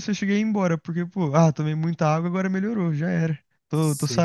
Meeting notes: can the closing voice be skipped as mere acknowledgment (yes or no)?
no